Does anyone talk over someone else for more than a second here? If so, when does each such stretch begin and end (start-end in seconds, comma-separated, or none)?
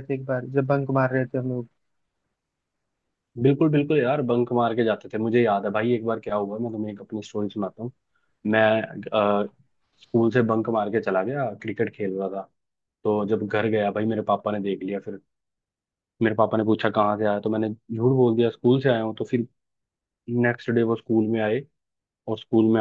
none